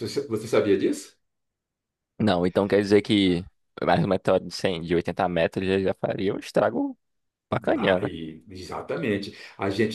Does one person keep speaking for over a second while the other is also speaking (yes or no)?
no